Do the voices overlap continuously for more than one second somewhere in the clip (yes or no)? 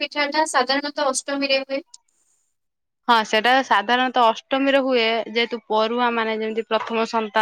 no